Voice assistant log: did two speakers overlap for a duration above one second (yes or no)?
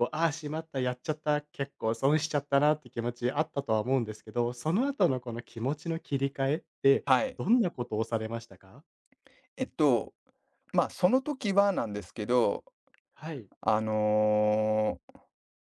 no